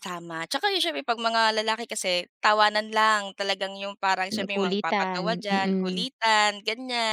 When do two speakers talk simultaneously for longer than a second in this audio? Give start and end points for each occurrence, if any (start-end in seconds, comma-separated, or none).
4.3-6.1